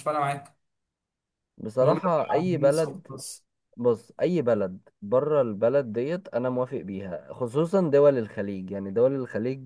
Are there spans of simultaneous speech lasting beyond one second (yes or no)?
yes